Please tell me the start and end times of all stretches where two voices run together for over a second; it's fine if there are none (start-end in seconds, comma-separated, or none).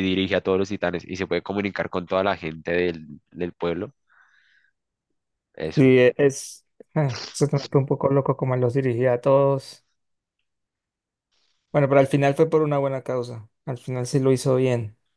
none